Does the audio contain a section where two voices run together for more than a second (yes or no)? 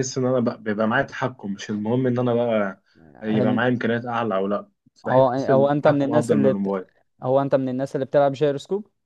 yes